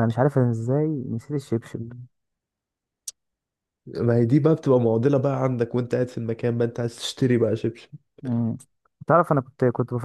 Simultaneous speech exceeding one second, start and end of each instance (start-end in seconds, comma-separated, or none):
none